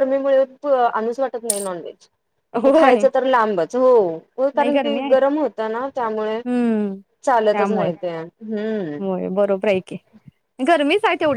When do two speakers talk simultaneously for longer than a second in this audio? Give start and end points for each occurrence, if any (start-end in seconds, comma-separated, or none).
none